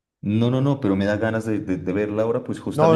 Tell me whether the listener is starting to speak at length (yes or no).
yes